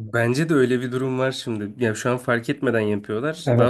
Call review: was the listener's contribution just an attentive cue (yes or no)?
no